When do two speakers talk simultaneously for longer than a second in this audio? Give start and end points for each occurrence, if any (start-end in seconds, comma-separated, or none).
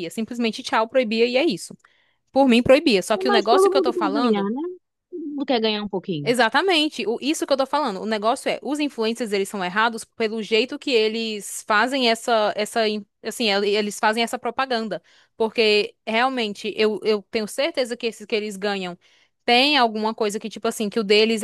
3.3-4.5